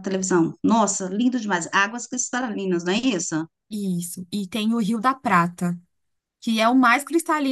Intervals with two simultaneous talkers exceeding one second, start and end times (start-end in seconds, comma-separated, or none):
none